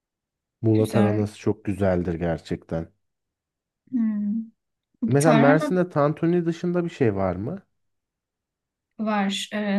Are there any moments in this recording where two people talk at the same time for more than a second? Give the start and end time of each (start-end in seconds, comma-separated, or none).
none